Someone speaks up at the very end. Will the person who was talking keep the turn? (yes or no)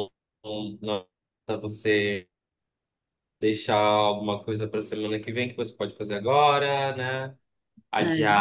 yes